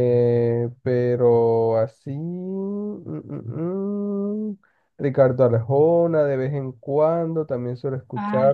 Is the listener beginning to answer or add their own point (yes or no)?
yes